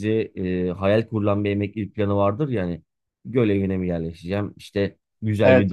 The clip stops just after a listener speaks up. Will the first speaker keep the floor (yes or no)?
yes